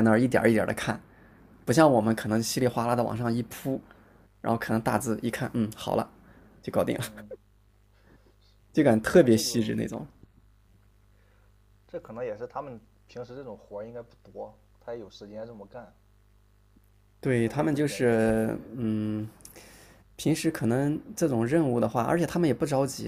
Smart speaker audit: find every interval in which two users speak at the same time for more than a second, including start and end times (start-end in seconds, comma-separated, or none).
17.4-18.7